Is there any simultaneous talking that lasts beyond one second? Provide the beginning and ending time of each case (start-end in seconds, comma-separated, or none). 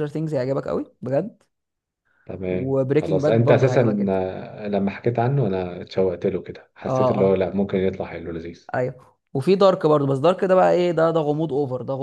2.5-4.2